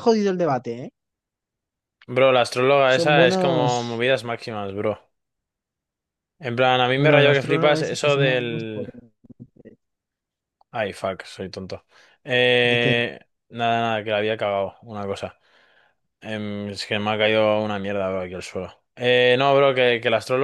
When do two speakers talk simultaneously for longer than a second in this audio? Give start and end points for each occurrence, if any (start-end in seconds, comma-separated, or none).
2.9-4.0, 7.0-8.9